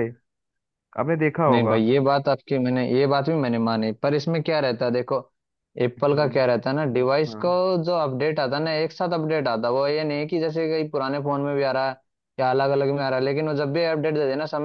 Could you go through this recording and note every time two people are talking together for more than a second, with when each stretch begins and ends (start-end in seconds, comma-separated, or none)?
none